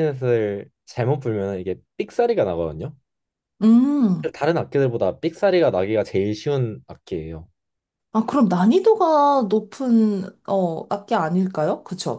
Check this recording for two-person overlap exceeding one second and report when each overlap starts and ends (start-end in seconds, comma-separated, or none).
none